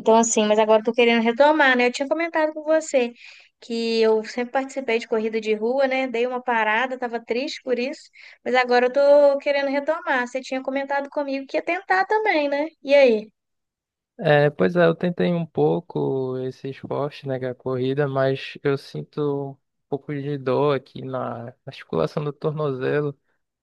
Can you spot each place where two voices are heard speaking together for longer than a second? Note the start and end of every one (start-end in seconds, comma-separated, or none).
none